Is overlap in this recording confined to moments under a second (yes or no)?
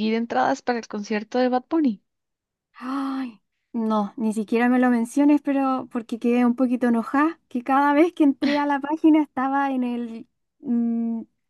yes